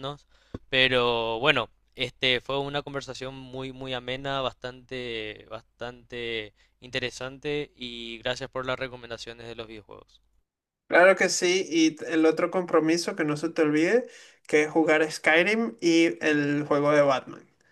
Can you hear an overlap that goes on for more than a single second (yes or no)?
no